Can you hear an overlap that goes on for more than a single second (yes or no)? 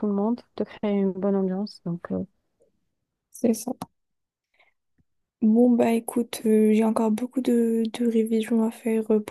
no